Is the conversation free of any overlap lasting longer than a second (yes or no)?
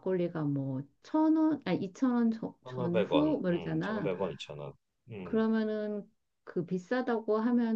no